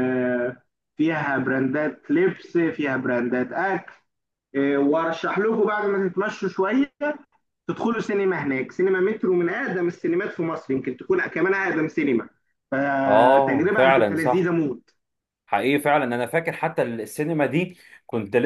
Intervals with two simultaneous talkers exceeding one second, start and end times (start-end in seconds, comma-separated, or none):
13.1-14.5